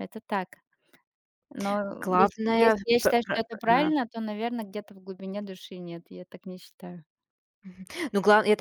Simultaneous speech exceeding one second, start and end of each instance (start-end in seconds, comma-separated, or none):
2.0-3.9